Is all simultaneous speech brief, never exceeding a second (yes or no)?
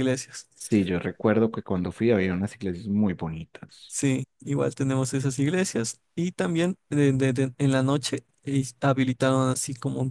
yes